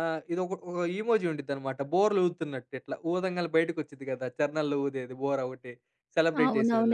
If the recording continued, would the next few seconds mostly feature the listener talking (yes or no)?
yes